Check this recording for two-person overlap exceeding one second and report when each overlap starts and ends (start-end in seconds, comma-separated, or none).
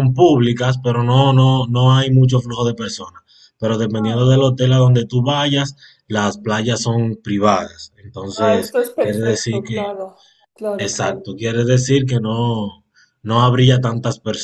8.3-9.8